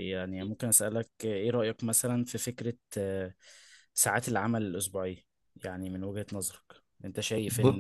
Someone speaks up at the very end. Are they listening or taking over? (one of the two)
listening